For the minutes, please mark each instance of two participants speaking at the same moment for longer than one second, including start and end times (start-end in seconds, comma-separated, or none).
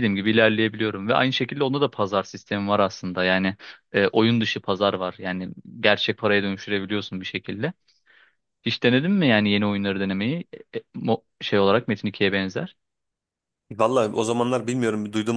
none